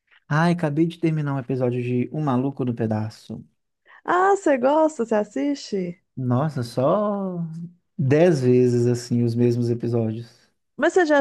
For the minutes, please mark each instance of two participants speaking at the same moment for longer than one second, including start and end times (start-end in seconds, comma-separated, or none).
none